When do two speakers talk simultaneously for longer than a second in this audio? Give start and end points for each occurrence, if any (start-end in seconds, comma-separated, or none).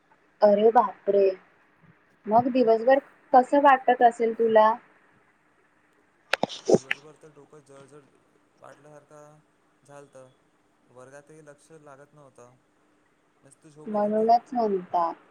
none